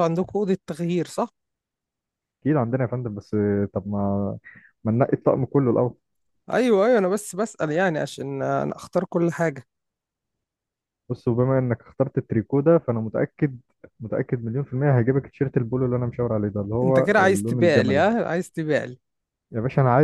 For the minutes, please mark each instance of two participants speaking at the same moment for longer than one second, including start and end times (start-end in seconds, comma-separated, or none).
16.8-18.0